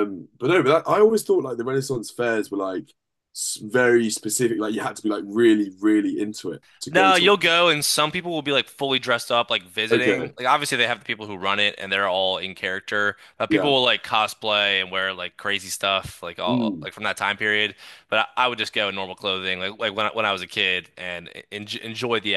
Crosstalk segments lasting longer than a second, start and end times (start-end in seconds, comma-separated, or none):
none